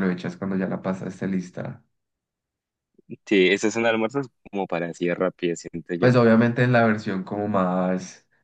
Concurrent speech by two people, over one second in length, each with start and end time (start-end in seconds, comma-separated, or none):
none